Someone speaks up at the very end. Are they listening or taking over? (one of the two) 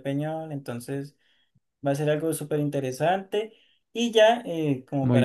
listening